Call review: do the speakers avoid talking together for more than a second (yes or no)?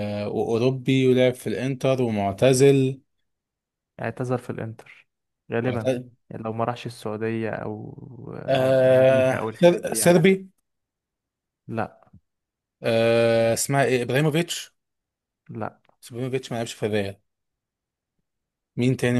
no